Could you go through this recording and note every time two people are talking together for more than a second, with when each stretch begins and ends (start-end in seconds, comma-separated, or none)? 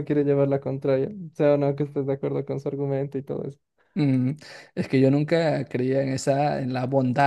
none